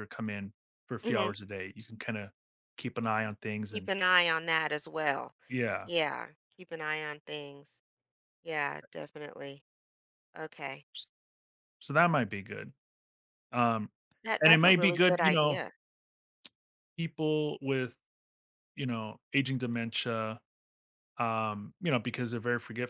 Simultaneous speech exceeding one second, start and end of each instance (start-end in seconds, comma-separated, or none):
14.4-15.6